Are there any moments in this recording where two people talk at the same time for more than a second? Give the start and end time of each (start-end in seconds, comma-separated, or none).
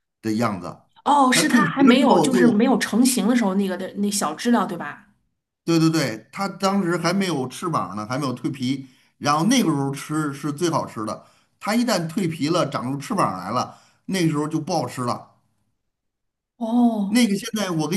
1.3-2.7